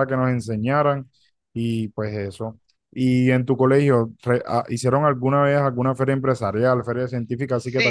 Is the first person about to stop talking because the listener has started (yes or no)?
yes